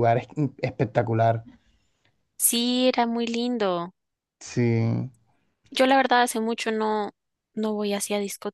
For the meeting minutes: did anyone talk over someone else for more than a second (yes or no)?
no